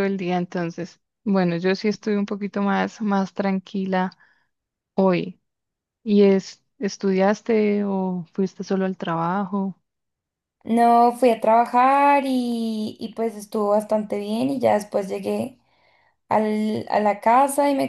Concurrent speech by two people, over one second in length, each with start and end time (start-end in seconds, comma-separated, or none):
none